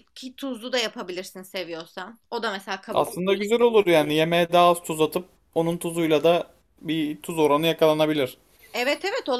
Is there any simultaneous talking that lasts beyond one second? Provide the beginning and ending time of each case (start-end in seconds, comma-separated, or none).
none